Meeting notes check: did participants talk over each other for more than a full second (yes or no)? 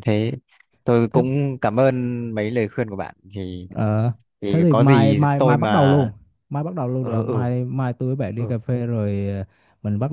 yes